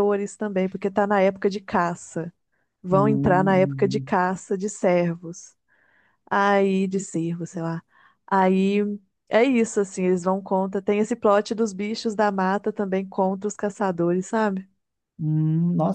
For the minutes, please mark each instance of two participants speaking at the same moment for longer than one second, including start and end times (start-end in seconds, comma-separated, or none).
2.9-4.1